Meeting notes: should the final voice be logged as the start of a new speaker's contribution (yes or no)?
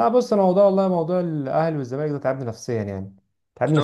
yes